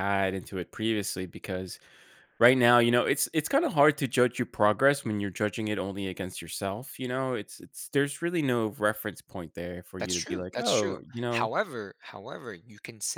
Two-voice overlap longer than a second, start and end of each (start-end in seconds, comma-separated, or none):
10.0-11.5